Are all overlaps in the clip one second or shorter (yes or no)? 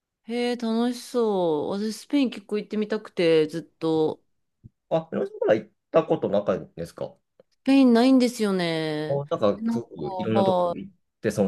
no